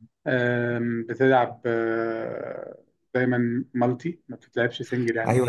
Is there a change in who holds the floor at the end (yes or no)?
yes